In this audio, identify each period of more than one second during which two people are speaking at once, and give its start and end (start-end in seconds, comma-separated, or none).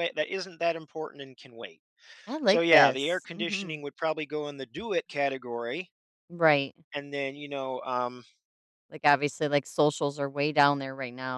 2.5-3.8